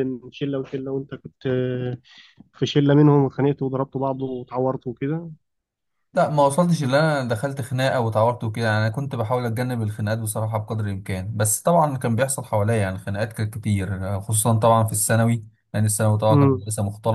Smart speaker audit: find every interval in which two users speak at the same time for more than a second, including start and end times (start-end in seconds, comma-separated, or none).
none